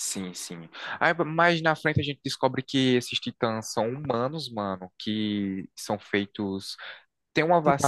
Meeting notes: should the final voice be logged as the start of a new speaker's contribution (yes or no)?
no